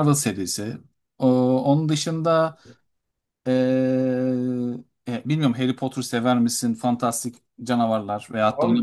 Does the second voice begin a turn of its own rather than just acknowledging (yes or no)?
yes